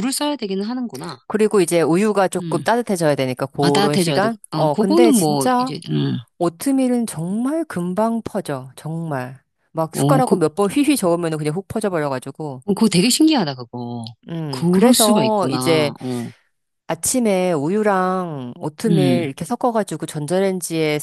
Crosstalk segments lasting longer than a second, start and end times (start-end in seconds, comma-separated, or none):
3.6-5.7, 14.5-15.9